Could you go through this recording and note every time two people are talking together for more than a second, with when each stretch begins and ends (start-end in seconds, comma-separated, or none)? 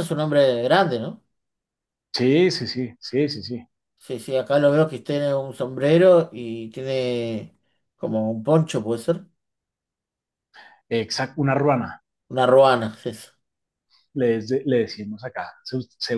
none